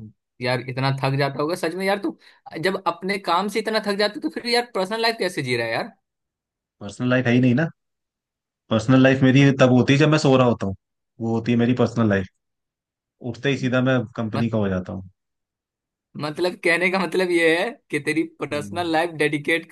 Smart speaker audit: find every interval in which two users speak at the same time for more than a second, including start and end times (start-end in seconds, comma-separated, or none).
none